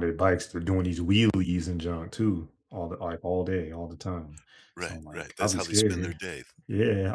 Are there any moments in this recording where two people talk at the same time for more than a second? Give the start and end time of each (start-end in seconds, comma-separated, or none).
4.8-6.2